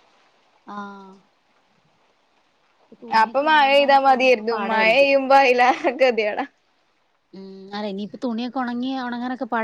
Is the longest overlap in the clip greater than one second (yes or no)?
yes